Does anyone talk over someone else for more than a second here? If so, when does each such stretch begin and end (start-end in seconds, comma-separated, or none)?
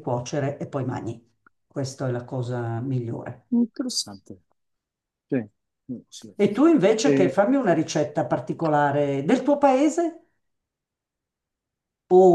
none